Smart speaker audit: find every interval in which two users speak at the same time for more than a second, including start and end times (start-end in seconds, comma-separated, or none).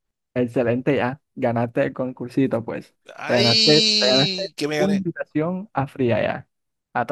3.1-5.0